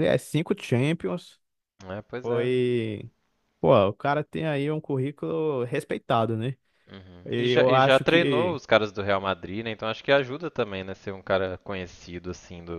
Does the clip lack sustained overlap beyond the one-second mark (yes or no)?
no